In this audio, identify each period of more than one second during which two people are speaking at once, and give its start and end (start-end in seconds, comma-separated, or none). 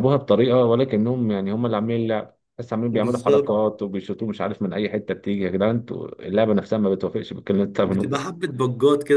none